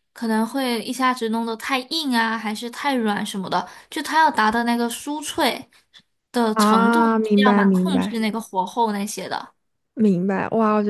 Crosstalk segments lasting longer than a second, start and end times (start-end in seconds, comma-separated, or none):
6.5-8.2